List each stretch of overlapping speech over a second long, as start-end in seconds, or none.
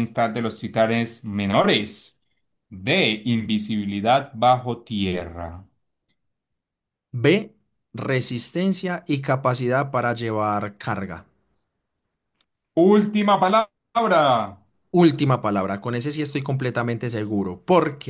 none